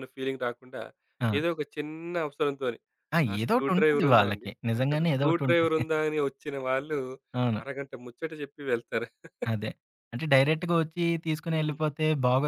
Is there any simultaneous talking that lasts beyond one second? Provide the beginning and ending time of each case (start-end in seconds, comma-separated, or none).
3.3-5.8